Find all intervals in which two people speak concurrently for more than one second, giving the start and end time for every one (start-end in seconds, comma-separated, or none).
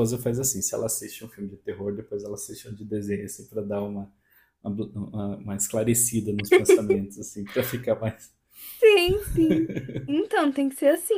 none